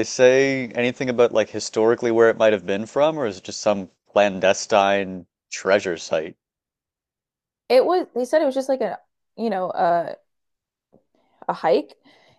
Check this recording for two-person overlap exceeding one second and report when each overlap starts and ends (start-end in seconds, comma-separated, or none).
none